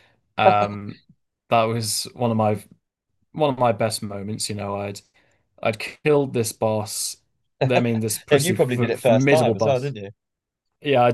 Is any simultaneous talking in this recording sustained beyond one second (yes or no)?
yes